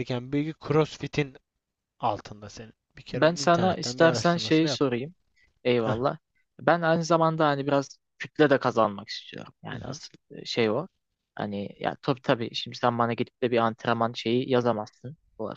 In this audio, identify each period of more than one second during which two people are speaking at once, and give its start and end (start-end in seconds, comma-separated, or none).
3.1-4.8